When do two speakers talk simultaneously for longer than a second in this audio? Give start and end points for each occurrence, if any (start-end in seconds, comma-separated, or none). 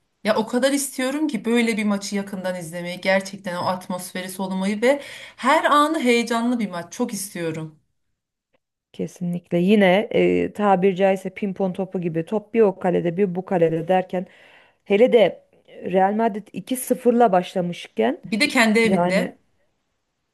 none